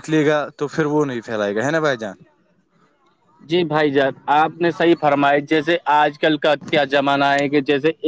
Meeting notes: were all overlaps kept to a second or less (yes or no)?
yes